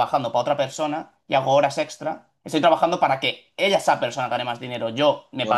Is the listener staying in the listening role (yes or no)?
yes